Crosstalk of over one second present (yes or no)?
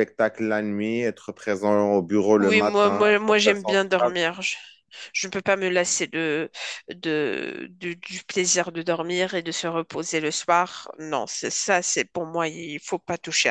yes